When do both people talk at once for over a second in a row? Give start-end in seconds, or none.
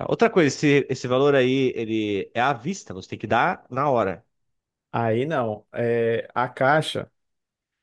none